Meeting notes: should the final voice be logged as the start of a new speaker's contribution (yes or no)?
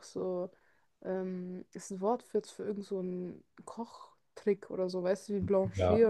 yes